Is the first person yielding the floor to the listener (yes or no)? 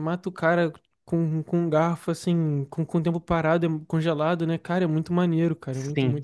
yes